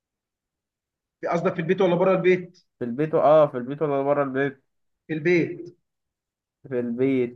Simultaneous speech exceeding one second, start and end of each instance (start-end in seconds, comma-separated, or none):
none